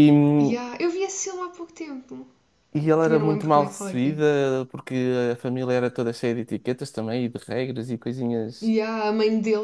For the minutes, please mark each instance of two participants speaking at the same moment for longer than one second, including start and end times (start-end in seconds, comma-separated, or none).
3.0-4.2